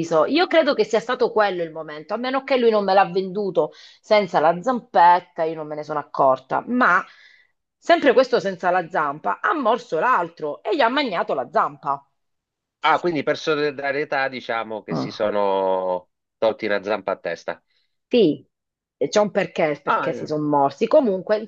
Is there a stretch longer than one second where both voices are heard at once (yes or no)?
no